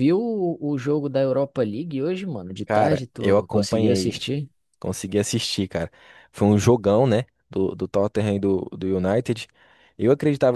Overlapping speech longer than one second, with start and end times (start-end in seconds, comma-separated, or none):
2.6-4.2